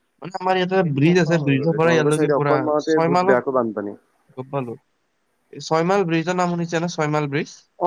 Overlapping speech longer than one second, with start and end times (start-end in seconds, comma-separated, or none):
0.8-3.9